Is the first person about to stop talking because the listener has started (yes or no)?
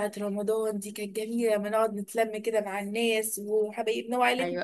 yes